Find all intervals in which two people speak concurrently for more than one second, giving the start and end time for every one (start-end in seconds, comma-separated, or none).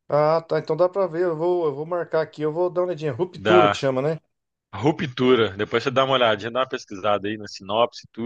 none